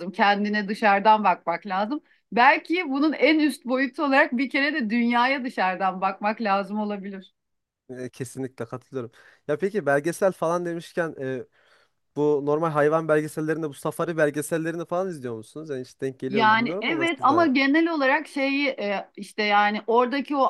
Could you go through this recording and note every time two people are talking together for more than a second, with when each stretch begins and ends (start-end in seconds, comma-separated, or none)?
16.3-17.5